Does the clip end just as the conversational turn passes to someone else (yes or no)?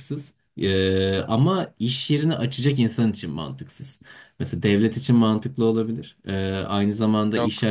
no